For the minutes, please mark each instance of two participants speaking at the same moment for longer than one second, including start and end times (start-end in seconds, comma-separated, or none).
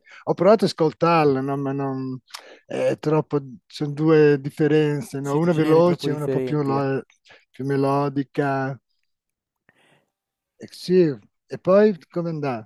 5.2-6.8